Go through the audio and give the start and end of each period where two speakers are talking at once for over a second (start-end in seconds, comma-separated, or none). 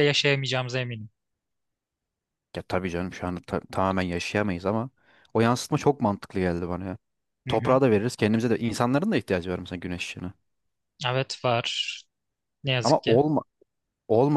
none